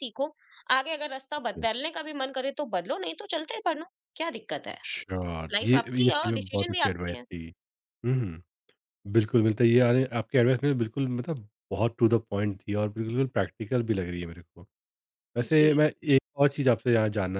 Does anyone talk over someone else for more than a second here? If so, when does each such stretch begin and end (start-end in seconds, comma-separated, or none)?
5.5-7.2